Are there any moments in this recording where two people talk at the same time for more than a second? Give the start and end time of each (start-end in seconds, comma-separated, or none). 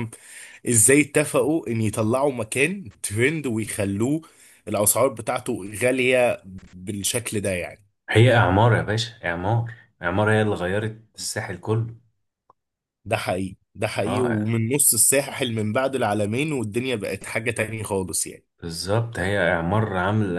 none